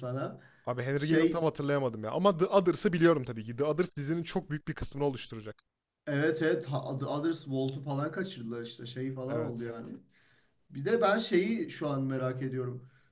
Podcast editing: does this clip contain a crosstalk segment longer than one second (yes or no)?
no